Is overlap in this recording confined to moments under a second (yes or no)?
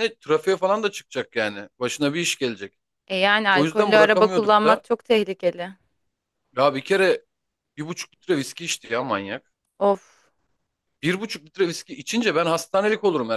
no